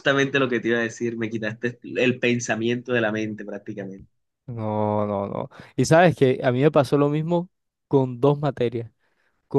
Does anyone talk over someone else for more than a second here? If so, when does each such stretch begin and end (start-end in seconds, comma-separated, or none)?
none